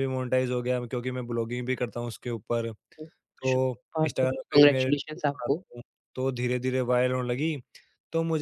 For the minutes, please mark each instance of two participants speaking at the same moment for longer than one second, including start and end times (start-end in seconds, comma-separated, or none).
3.5-5.6